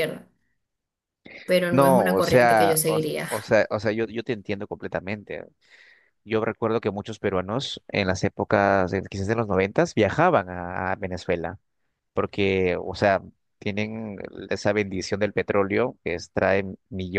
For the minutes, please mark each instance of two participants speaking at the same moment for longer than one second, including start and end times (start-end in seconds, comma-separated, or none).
1.7-3.3